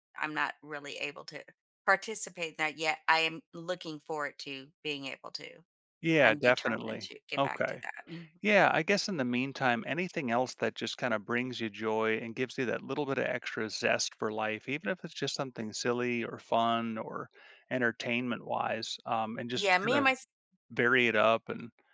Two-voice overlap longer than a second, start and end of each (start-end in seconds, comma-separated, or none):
6.2-7.8